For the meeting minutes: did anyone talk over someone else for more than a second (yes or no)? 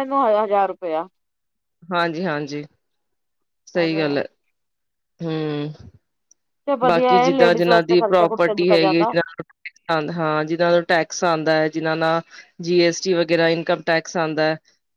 yes